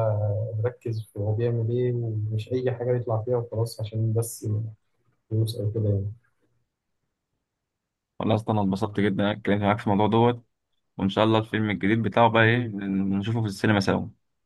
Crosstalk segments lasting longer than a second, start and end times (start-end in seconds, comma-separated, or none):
none